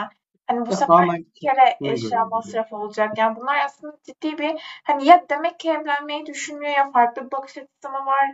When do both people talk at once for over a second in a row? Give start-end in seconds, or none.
0.7-2.6